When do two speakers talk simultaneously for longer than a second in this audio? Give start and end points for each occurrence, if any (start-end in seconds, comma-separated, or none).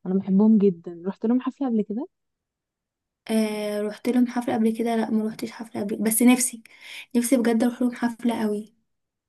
none